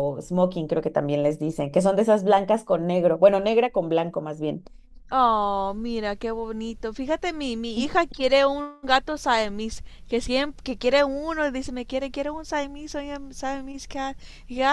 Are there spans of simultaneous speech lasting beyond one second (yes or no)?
no